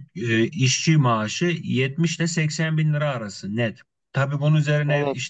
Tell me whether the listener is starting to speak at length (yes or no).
no